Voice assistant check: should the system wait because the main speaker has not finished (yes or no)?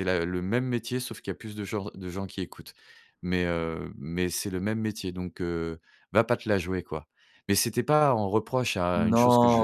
no